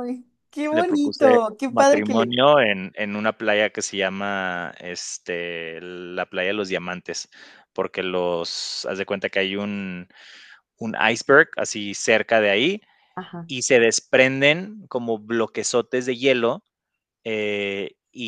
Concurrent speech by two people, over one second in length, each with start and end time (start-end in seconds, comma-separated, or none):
0.7-2.3